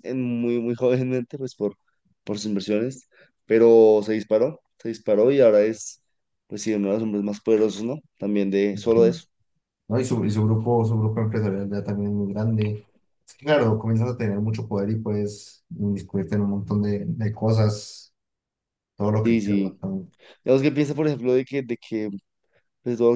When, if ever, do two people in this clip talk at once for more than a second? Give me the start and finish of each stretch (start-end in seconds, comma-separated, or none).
none